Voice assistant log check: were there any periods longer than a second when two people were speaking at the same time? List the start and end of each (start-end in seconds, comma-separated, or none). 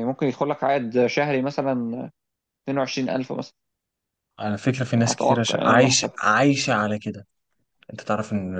4.9-6.3